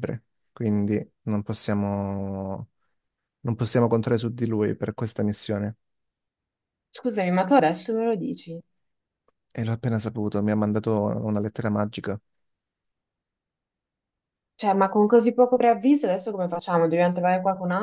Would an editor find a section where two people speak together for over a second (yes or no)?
no